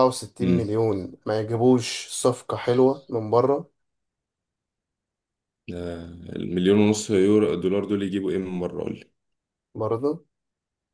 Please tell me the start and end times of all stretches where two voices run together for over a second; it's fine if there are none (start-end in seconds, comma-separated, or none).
none